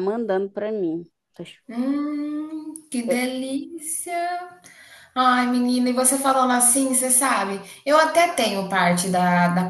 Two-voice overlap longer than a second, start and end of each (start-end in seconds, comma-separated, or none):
none